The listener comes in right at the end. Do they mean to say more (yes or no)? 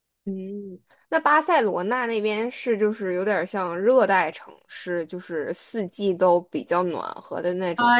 yes